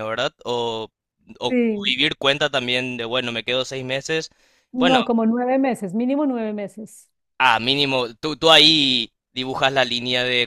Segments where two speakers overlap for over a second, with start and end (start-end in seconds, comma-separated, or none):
none